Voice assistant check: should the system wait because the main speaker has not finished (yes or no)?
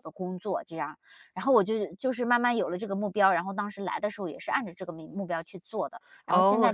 no